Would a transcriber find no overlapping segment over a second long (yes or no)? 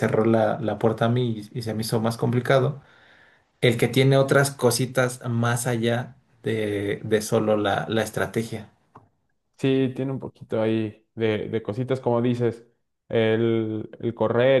yes